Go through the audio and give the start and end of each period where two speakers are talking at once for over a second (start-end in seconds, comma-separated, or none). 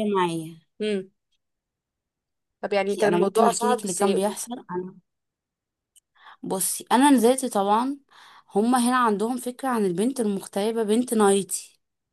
2.9-4.4